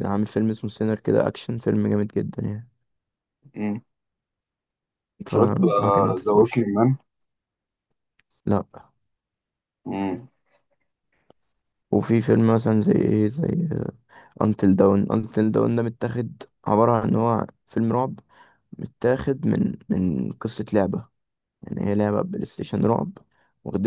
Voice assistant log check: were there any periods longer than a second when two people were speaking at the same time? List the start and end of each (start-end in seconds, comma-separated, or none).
5.3-6.7